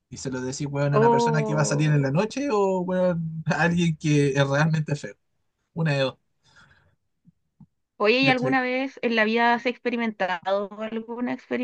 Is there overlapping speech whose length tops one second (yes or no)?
yes